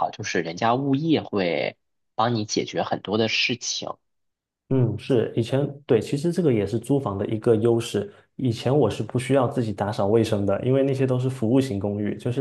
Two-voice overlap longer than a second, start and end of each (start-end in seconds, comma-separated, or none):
none